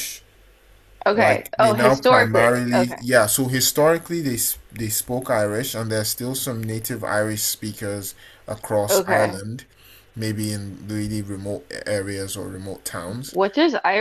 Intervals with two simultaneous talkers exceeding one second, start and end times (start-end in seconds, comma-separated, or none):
1.1-3.0